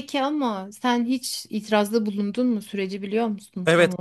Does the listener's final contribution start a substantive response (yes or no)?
yes